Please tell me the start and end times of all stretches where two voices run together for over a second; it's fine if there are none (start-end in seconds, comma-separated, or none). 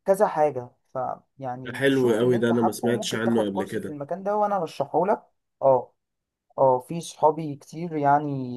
1.6-4.0